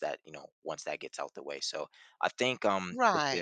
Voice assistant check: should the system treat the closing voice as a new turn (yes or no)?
yes